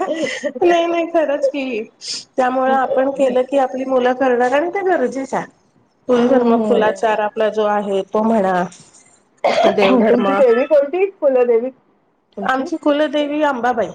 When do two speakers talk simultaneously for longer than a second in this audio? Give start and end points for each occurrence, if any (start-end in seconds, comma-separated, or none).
6.2-7.4